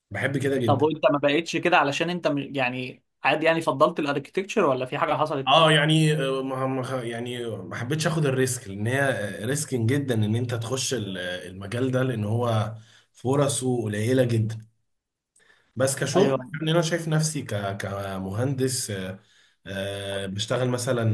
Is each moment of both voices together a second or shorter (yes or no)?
yes